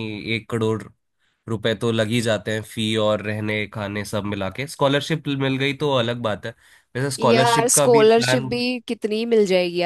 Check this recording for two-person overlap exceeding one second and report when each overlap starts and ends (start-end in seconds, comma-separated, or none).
7.2-8.5